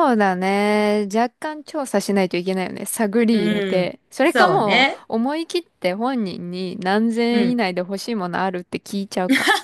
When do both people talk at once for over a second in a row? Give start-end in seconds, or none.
3.3-5.0